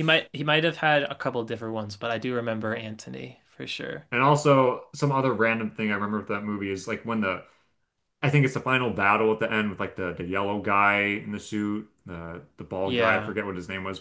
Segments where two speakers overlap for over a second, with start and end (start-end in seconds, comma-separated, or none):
none